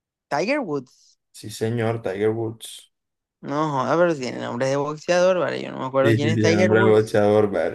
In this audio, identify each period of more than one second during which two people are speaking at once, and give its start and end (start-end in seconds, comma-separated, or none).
6.0-7.2